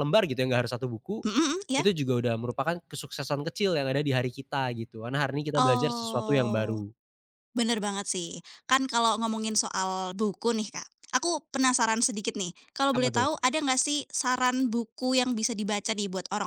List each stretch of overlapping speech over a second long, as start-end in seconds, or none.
5.5-6.8